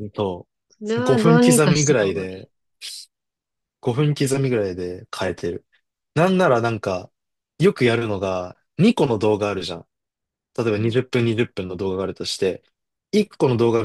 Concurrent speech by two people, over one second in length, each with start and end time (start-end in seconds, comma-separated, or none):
1.0-2.5